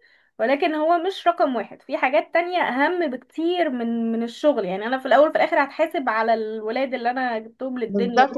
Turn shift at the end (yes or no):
yes